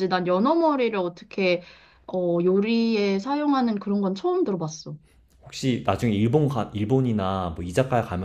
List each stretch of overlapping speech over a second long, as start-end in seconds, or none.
none